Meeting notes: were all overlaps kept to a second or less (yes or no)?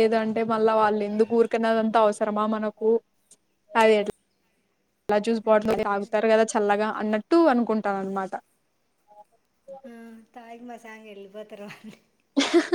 yes